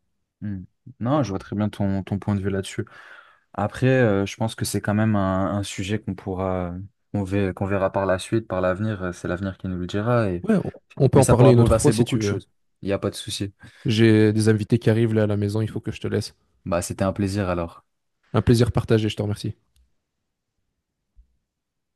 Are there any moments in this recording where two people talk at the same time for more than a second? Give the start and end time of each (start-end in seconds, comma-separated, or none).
11.1-12.4